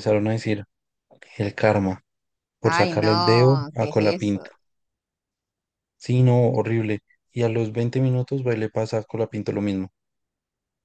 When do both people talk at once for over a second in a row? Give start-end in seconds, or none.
2.6-4.4